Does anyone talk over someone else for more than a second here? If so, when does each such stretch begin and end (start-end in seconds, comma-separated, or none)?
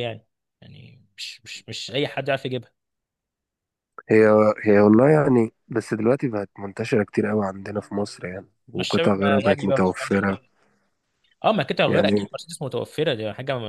8.8-10.2